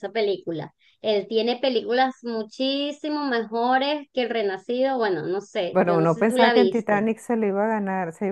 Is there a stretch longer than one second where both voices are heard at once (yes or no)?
yes